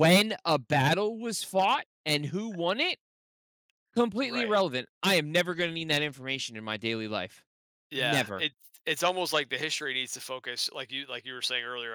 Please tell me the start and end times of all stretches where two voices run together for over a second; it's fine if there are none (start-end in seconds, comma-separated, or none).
none